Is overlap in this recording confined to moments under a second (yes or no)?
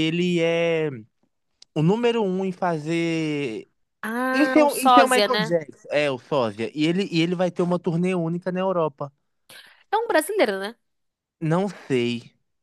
no